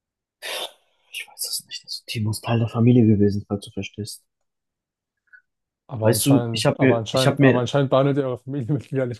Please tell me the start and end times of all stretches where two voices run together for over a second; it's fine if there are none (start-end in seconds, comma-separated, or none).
6.0-7.7